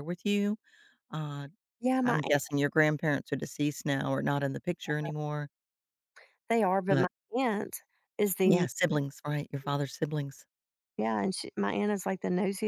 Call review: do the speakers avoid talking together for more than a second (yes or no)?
yes